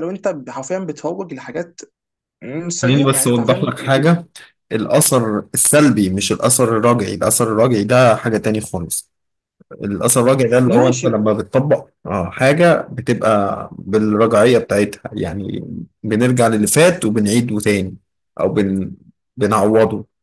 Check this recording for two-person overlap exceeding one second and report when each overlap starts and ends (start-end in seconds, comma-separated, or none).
2.8-4.2